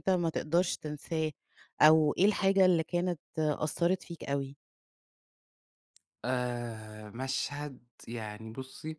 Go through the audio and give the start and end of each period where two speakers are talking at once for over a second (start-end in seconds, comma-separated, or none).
none